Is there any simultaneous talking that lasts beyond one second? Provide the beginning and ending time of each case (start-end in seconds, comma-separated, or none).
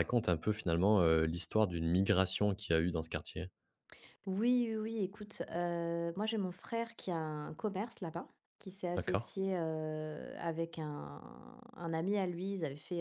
none